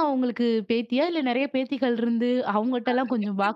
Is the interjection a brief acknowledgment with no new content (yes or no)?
yes